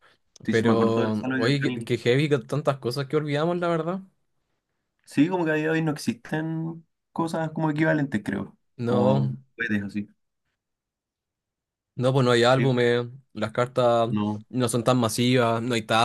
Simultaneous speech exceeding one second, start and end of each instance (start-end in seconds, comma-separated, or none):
0.5-1.9